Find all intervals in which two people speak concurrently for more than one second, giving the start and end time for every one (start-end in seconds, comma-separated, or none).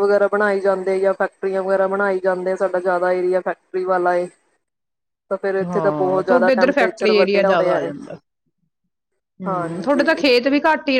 5.6-7.9